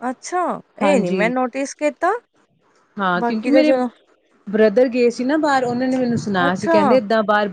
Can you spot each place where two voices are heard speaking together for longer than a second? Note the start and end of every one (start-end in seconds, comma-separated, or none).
none